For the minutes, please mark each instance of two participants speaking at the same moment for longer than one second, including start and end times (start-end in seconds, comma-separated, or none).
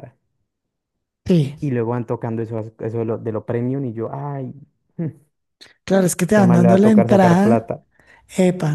6.3-7.7